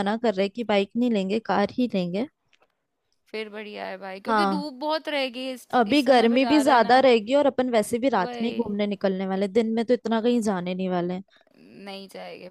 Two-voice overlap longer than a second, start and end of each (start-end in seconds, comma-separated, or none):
5.7-7.0